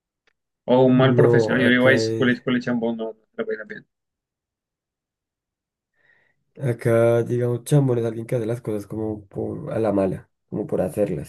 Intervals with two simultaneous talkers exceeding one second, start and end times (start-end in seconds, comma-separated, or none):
0.8-2.4